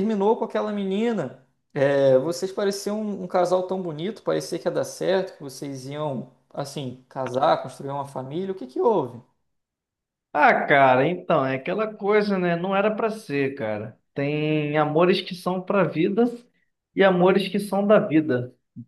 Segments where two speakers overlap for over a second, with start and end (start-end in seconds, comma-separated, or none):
none